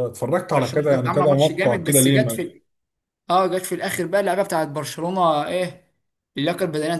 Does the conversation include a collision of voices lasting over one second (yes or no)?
yes